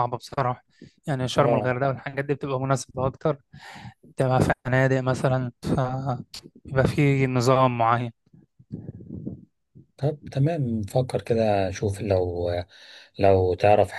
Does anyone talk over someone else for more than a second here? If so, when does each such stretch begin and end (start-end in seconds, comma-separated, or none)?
none